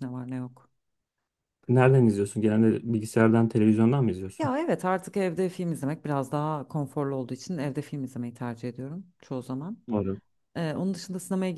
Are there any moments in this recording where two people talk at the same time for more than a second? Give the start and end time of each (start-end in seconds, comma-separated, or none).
none